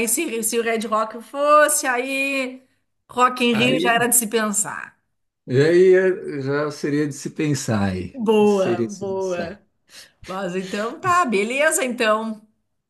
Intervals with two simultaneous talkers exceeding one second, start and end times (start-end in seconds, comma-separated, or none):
8.1-9.6